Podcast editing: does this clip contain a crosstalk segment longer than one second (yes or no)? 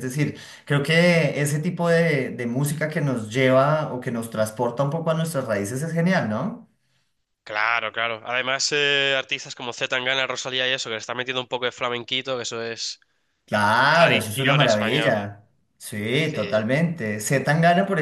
yes